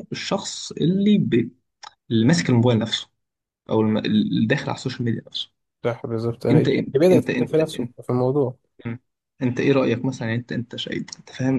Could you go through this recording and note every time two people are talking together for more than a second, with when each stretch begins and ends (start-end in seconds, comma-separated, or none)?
6.5-7.9